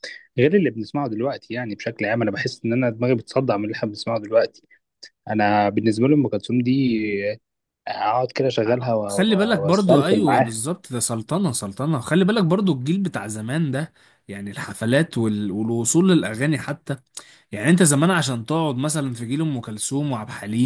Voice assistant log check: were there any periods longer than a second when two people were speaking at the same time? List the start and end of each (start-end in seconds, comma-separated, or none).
9.1-10.6